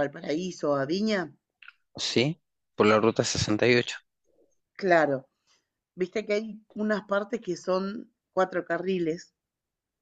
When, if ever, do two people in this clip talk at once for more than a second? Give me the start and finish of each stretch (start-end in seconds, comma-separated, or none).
none